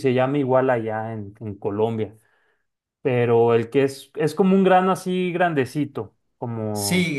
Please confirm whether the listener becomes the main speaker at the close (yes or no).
yes